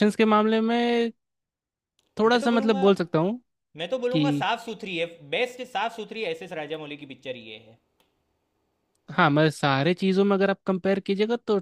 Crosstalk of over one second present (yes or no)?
no